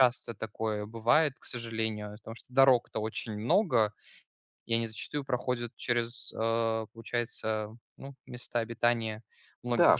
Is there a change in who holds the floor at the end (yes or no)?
yes